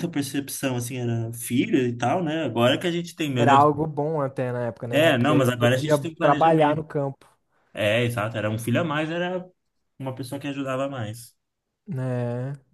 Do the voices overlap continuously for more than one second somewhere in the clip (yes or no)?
yes